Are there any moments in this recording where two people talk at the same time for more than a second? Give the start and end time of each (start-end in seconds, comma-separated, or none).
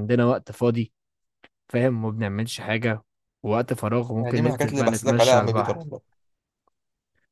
4.2-5.8